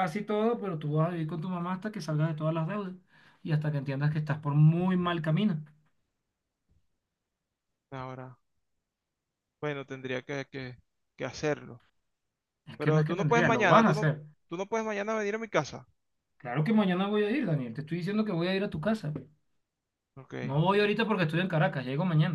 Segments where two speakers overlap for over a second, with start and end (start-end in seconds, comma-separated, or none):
12.8-14.1